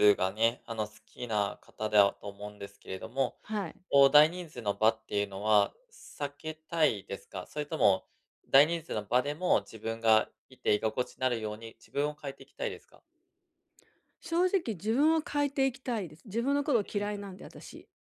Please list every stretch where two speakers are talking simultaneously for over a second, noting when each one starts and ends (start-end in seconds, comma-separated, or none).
none